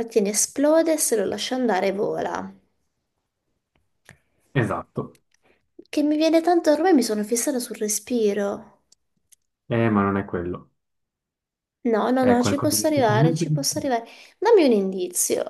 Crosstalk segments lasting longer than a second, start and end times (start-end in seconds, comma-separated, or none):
12.2-13.9